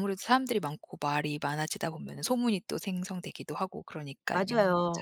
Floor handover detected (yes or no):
yes